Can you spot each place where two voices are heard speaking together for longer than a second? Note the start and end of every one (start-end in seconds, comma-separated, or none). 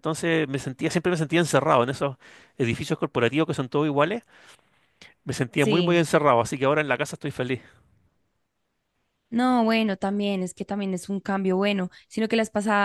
none